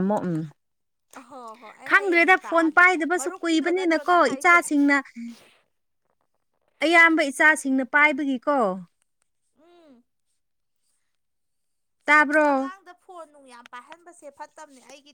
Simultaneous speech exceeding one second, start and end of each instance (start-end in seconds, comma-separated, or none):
1.9-4.6